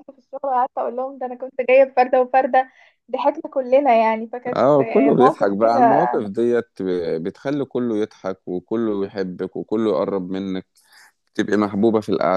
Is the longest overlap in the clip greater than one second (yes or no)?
yes